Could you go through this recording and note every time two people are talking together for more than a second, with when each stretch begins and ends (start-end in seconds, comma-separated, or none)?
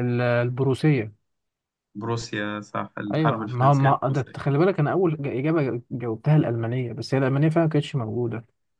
3.1-4.4